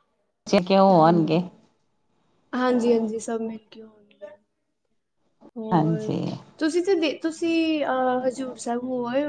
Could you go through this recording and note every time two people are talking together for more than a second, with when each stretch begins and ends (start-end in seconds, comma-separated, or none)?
none